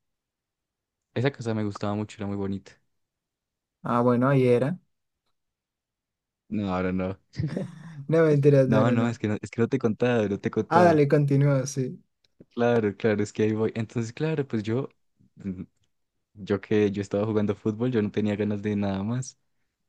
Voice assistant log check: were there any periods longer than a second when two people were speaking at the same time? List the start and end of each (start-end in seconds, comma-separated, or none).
none